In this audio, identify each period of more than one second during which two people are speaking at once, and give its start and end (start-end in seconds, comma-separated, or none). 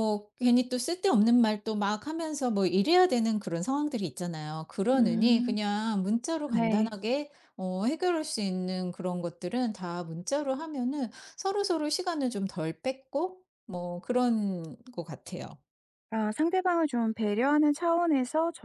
none